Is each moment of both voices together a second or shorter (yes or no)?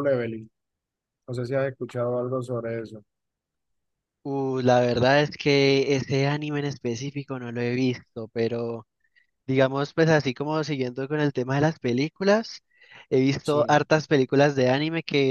yes